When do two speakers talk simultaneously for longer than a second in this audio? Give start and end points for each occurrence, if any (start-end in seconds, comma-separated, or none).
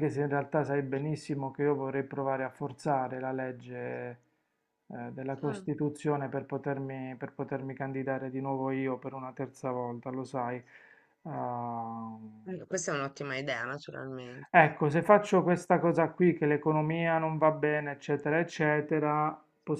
none